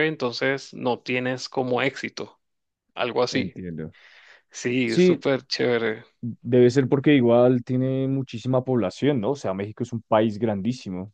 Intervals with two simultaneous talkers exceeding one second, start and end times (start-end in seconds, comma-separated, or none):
none